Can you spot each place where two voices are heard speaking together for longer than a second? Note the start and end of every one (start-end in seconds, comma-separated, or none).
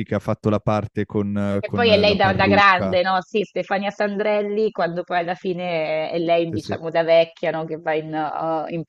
1.6-3.0